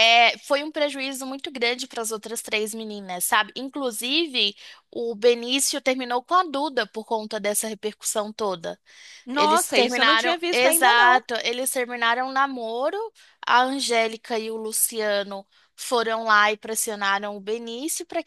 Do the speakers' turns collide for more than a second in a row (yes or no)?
yes